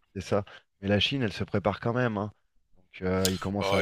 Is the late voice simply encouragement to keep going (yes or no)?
no